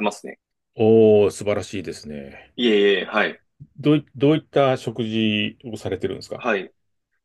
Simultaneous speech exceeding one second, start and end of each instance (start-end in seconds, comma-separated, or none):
none